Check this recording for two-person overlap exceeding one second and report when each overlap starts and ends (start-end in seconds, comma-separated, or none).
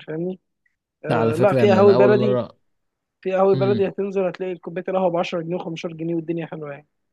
1.1-2.4